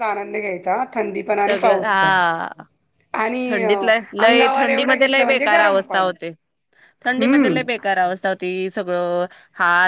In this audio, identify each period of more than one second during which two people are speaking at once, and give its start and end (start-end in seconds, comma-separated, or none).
4.6-6.1